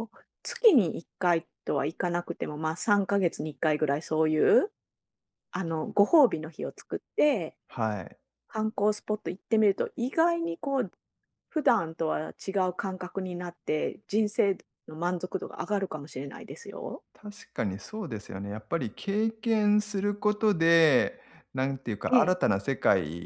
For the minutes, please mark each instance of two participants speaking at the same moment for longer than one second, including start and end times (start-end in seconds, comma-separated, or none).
none